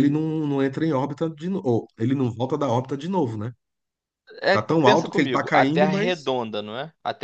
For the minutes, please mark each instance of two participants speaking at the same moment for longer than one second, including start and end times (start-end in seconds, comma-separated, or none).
4.5-6.3